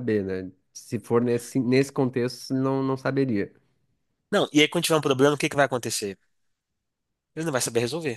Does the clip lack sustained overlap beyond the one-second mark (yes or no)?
yes